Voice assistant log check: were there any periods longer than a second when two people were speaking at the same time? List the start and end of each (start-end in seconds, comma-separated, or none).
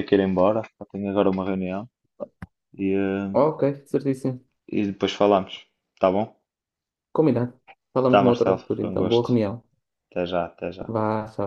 8.1-9.4